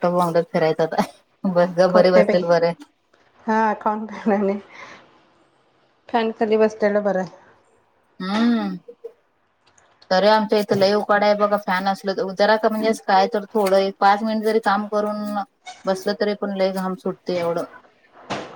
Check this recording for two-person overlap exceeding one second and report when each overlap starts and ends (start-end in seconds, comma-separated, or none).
none